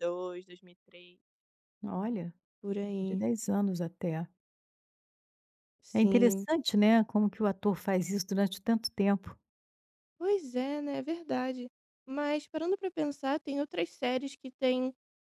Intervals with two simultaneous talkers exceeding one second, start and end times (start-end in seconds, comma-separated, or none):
none